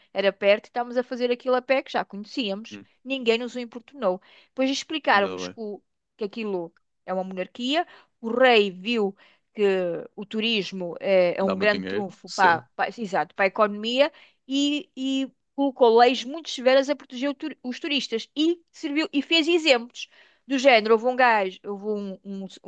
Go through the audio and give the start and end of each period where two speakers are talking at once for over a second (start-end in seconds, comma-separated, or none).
11.4-12.6